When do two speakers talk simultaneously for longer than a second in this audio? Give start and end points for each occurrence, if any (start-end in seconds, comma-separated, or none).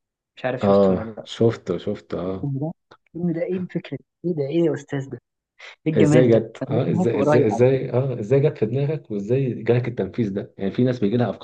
6.0-7.8